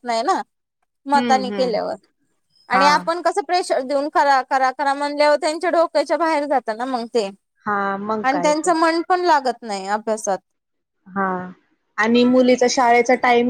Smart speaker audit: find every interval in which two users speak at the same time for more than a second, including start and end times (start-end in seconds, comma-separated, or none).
none